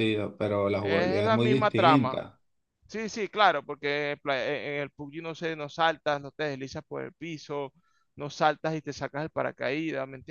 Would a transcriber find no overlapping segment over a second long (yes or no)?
no